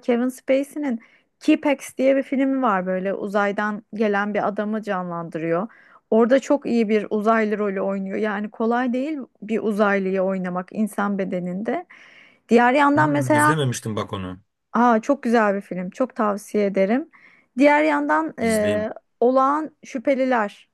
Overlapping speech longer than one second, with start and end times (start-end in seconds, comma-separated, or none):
none